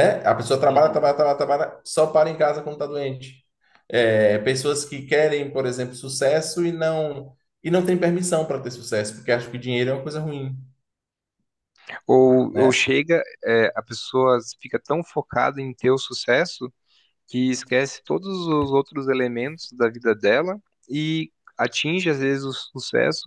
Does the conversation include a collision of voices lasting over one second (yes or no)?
no